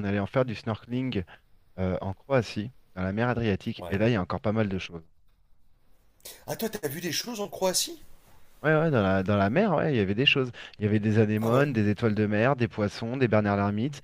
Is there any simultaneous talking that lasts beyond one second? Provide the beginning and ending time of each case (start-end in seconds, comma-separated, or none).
none